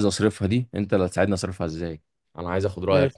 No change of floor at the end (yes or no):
yes